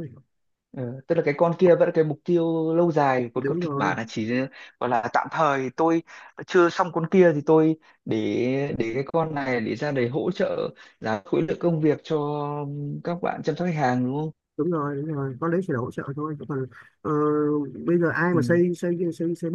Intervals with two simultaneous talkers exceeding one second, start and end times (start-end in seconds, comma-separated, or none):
none